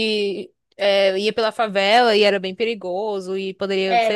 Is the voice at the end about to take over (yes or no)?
yes